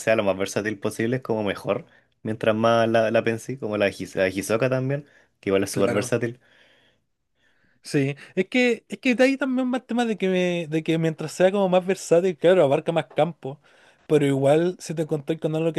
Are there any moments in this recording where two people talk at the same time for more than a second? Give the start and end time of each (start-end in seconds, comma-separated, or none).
none